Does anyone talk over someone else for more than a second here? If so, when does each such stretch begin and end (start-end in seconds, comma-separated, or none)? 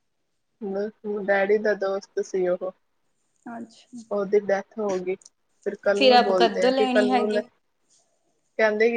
6.0-7.4